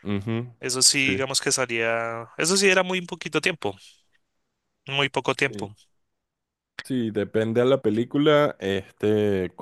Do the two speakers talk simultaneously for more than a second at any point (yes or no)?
no